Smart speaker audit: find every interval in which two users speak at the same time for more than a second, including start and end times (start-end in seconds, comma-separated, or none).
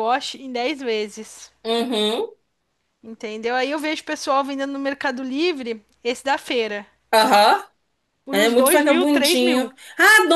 8.3-9.7